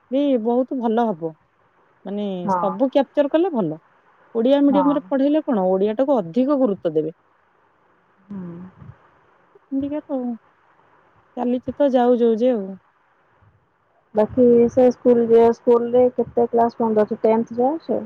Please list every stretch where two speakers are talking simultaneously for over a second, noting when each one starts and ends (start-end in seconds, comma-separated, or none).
none